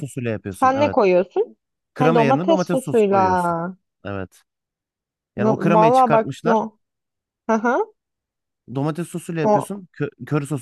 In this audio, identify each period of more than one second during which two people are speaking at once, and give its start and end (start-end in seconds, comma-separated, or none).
2.0-3.2, 5.3-6.6